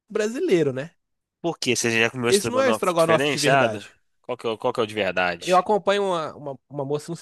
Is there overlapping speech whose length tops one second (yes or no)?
yes